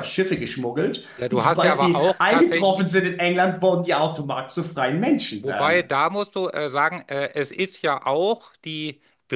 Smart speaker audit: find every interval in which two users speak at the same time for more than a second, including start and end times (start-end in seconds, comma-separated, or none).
1.2-2.9